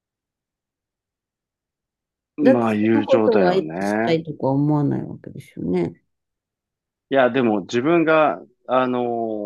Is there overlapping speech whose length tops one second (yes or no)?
yes